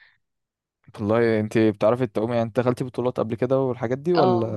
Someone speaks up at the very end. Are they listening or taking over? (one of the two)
taking over